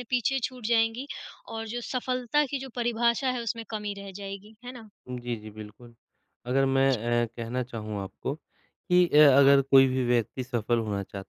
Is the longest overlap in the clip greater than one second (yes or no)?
no